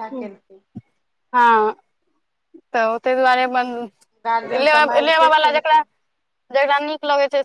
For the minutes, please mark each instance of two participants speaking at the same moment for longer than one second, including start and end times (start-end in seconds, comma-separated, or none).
4.3-5.8